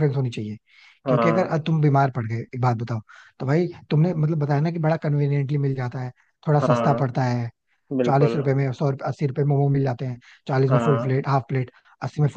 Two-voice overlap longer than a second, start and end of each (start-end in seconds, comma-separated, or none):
none